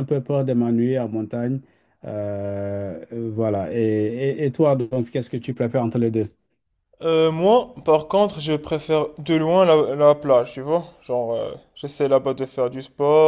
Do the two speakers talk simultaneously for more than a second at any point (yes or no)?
no